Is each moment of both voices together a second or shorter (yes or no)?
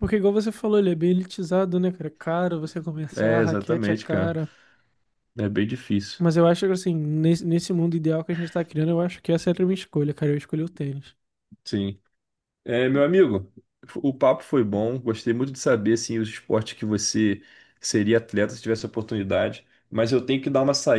no